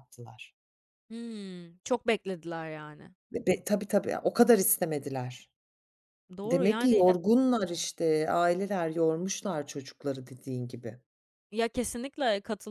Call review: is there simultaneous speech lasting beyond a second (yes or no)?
no